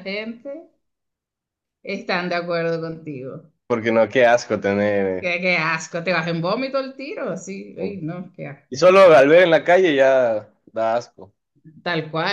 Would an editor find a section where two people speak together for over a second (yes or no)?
no